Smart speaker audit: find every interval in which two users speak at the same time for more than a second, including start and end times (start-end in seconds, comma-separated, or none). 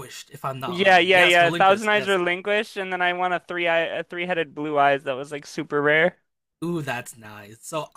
0.7-2.2